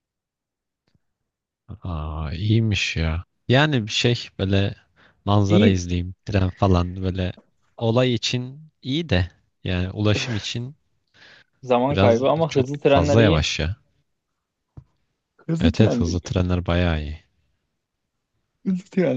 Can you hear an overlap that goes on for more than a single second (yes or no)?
yes